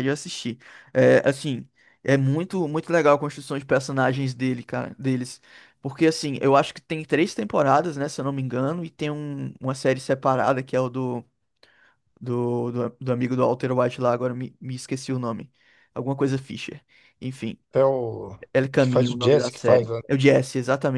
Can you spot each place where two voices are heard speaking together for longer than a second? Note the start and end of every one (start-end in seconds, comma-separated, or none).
18.8-20.0